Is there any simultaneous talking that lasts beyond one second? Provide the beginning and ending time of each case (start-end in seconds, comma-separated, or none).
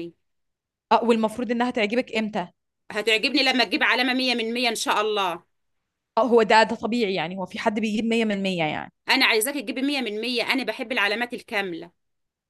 none